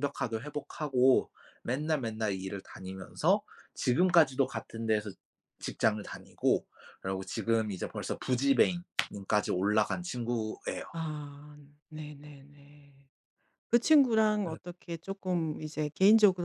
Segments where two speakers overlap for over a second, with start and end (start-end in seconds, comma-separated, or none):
none